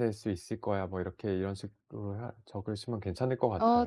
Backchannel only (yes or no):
no